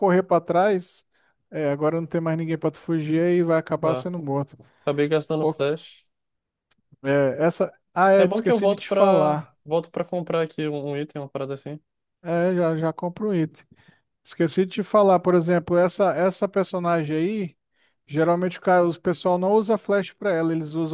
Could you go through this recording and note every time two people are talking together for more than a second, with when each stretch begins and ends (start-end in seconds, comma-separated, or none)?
8.2-9.6